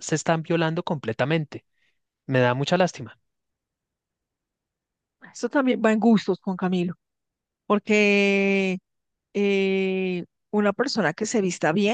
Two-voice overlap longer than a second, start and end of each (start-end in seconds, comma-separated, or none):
none